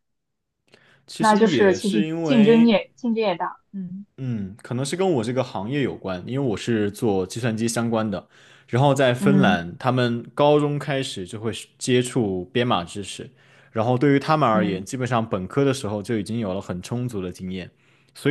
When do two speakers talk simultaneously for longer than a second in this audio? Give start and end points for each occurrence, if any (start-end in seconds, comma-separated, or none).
1.2-2.8